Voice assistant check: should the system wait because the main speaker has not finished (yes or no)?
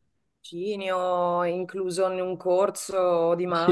no